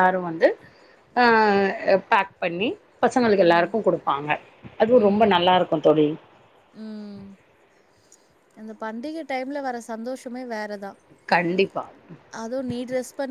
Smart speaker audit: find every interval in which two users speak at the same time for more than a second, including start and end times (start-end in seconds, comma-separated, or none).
none